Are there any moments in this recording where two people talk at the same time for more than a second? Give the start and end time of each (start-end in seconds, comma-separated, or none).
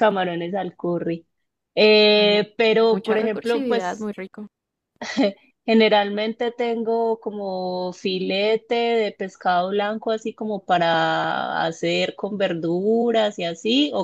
2.1-4.1